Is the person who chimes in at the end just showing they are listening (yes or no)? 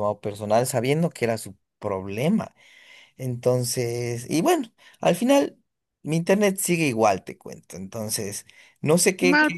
yes